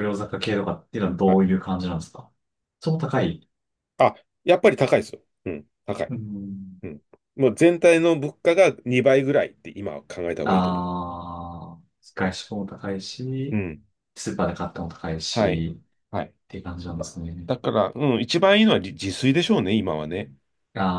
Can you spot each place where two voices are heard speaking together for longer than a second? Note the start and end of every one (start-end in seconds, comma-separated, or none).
none